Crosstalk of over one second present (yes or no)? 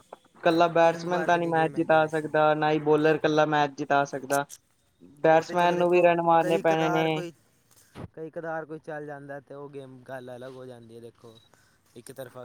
yes